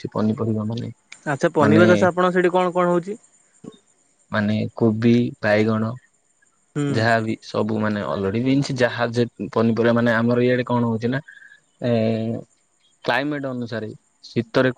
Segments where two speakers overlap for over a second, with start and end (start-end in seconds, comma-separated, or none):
none